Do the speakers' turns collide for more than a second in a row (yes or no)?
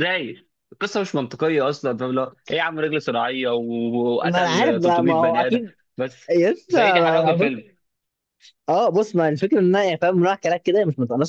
yes